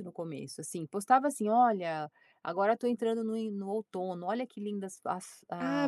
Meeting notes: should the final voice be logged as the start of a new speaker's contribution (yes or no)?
yes